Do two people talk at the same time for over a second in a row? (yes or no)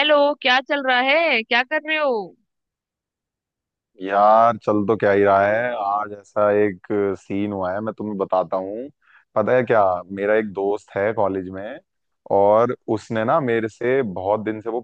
no